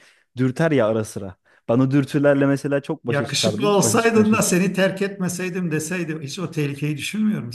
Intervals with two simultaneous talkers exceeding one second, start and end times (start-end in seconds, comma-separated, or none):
3.1-4.6